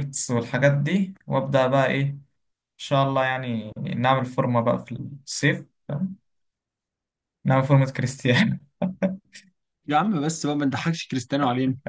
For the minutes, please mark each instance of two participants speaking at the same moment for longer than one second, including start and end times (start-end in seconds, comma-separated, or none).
none